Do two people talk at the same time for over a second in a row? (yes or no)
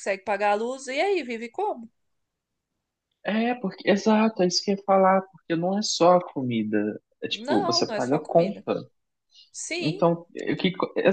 yes